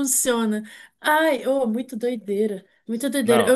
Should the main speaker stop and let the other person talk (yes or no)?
no